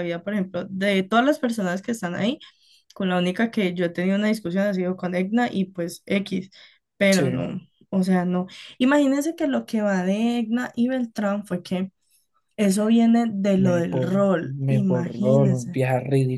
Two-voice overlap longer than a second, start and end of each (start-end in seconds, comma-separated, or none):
13.6-15.8